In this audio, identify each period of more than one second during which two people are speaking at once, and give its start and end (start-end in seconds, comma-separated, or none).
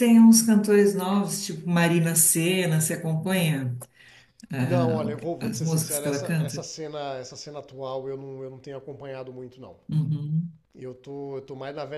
4.6-6.7